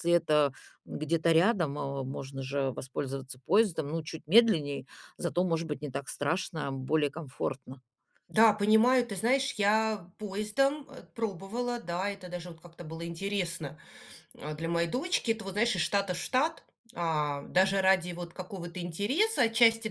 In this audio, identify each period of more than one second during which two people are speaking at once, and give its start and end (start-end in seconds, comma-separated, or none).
none